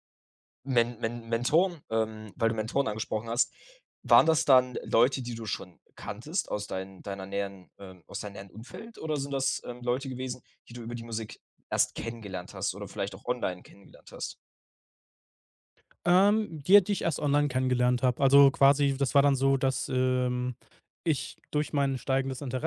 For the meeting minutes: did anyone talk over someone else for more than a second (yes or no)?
no